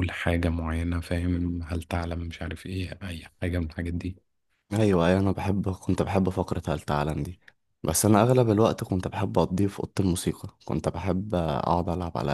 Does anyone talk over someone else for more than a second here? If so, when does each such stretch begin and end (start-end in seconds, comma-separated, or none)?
none